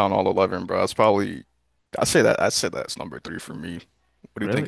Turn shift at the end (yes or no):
yes